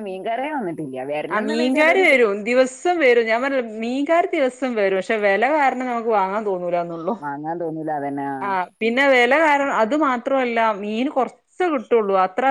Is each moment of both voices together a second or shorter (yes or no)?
yes